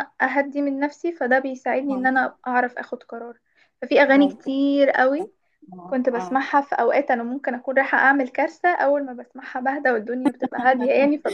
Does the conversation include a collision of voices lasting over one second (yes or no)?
no